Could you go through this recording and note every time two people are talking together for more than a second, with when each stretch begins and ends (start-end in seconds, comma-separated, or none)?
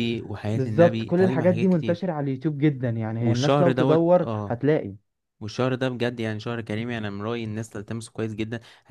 0.5-2.0, 3.2-4.6